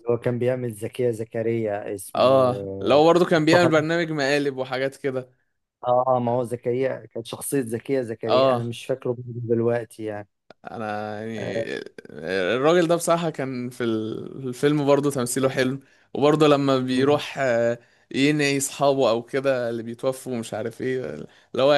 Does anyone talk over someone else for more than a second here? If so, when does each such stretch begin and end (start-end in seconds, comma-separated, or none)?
2.1-3.7